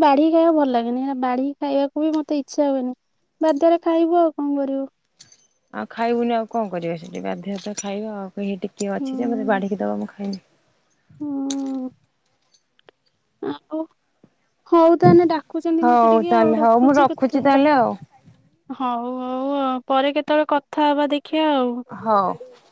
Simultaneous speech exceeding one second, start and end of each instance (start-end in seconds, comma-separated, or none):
15.8-17.4